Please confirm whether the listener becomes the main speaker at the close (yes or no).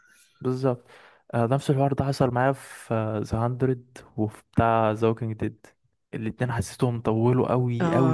yes